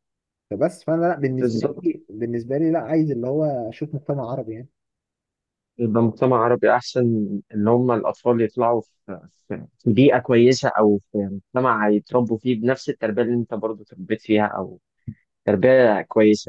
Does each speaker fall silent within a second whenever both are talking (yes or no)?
yes